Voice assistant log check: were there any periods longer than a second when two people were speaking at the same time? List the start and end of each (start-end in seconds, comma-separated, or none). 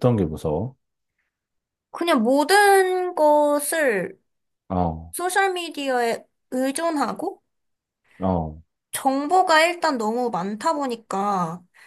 none